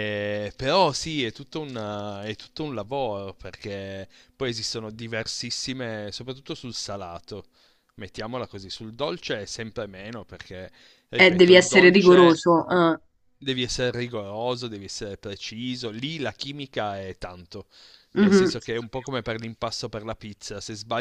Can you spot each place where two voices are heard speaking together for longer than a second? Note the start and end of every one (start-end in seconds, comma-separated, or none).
11.2-12.4